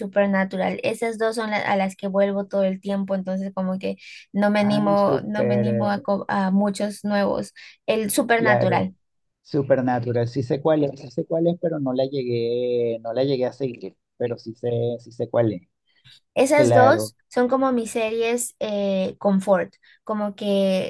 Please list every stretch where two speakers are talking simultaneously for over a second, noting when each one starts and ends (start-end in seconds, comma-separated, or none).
4.6-6.1